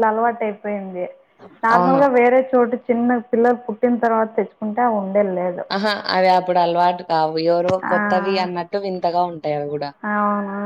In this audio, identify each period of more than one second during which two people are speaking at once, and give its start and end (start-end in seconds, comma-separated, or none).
none